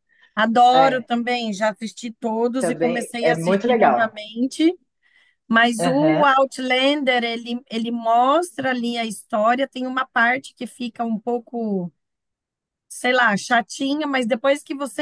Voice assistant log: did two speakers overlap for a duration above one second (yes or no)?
yes